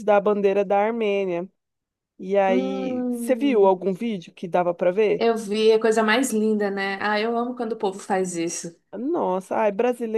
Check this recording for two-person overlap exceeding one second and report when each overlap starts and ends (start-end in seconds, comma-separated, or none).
2.5-3.8